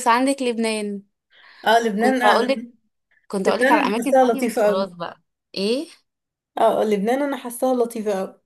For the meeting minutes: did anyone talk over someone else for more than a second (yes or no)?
yes